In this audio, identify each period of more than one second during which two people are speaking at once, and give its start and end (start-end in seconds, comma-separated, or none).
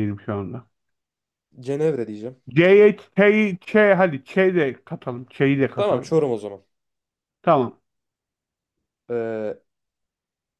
none